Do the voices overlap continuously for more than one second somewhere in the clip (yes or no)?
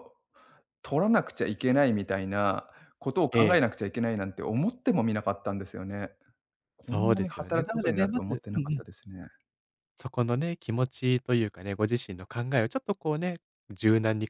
yes